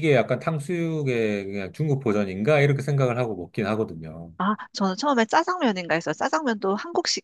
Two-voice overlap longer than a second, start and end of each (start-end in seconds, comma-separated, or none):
none